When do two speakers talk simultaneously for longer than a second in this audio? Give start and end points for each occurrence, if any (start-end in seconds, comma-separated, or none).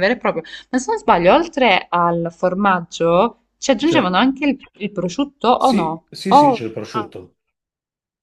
5.5-7.1